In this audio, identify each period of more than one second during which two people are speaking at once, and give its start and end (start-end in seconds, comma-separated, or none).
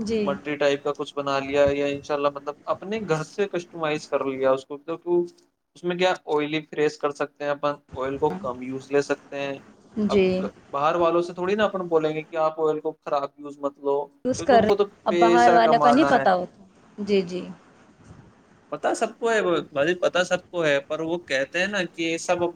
14.2-16.2